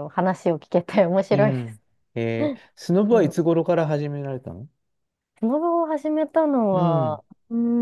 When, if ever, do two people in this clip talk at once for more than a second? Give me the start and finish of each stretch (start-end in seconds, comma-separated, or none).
none